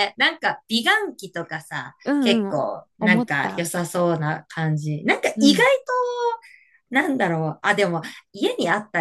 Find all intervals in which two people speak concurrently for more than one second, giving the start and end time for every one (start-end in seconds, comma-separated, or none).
2.0-3.7